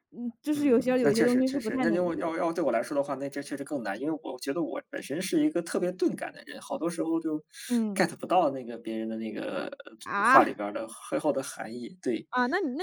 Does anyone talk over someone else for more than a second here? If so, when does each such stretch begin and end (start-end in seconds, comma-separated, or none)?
0.5-2.3